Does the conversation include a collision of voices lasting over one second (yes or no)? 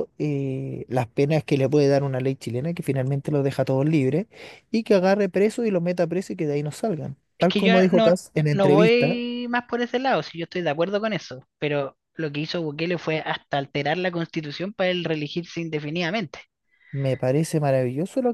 yes